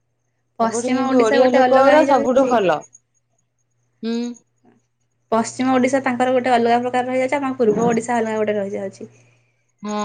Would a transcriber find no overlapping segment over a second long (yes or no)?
no